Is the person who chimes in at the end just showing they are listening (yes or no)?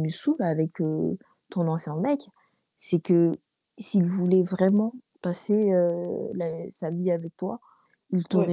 yes